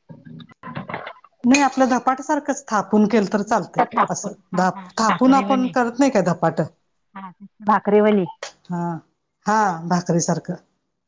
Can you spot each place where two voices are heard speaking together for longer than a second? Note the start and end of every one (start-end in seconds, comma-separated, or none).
3.5-5.7